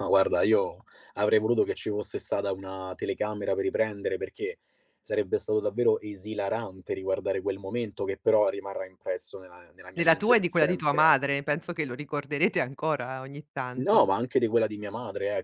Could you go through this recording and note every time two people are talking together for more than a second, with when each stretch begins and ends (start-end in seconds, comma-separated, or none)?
9.9-11.4